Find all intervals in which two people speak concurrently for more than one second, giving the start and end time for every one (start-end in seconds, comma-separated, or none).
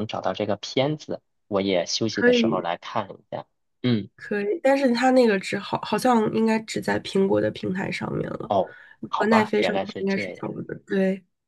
9.2-10.5